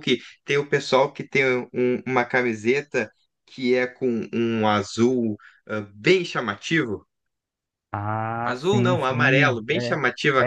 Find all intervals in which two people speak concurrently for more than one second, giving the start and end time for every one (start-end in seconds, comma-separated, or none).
8.4-9.9